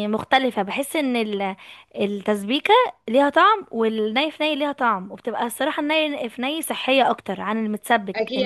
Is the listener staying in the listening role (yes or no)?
no